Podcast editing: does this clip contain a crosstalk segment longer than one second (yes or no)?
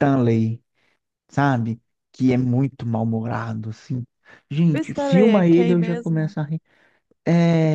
yes